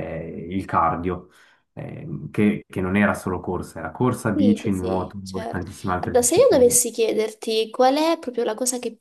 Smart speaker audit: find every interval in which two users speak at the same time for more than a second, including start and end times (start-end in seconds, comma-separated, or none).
4.3-6.8